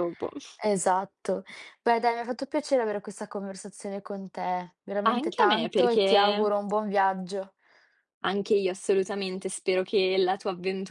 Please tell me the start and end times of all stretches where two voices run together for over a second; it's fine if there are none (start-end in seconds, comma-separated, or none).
5.1-6.5